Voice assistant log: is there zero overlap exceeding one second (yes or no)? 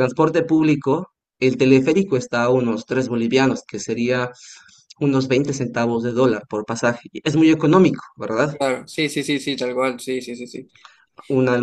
yes